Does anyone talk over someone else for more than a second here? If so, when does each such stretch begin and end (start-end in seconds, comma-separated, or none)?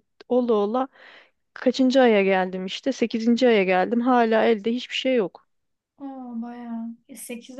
none